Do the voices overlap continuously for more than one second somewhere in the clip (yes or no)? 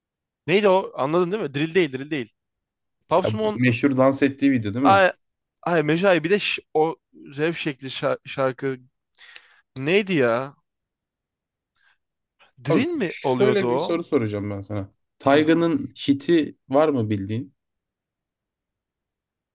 yes